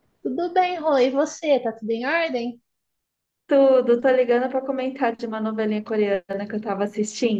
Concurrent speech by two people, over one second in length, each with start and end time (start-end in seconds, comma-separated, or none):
none